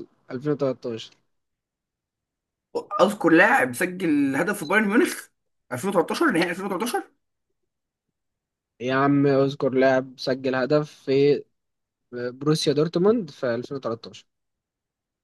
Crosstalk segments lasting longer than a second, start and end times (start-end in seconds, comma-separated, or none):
none